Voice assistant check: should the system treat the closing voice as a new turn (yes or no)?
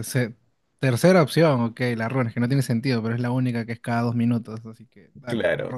yes